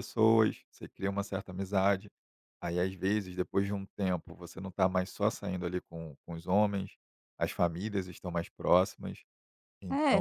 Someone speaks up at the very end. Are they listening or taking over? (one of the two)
taking over